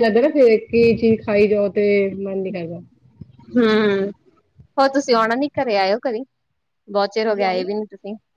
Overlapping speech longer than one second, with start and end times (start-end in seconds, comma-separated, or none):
none